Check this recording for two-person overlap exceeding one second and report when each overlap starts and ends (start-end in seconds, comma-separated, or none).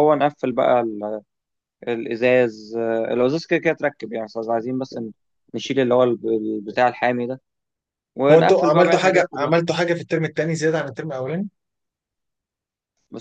8.3-9.6